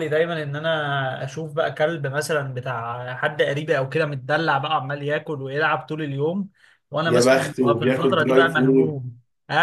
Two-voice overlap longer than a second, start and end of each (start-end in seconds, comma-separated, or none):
7.1-9.0